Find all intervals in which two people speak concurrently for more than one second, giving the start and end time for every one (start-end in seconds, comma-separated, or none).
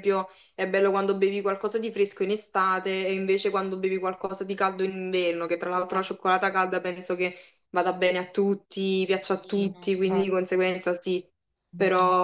9.3-10.5